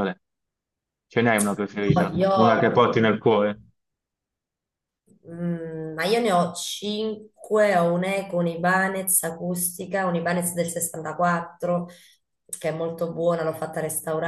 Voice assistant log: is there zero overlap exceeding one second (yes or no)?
yes